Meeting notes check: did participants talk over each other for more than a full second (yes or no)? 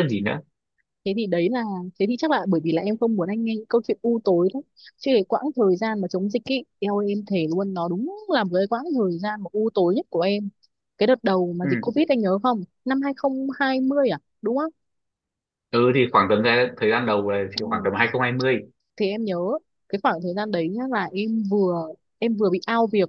no